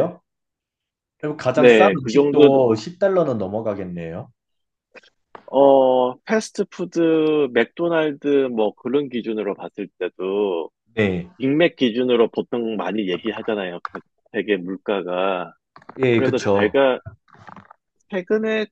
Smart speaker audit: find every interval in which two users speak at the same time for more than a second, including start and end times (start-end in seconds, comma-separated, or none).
1.5-2.7